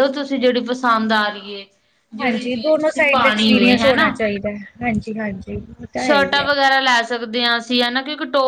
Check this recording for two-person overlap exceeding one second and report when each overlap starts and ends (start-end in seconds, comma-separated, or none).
2.2-4.1